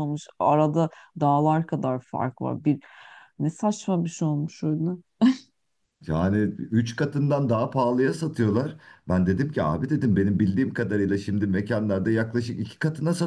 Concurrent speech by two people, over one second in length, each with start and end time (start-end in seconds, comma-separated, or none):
none